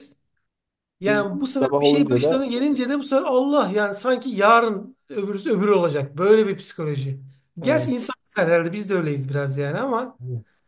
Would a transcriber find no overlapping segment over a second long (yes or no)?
no